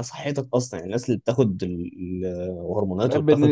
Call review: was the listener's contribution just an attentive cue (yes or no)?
no